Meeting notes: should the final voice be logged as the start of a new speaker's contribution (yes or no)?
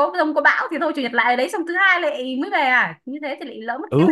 yes